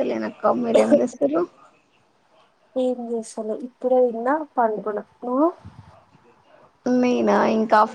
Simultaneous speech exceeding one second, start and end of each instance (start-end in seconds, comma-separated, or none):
none